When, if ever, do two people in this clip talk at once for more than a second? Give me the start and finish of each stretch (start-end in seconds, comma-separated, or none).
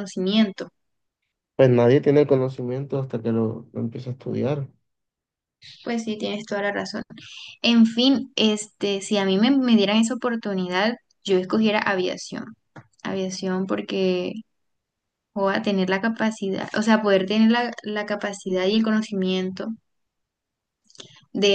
none